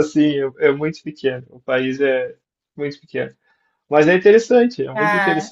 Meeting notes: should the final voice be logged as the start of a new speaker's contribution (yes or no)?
yes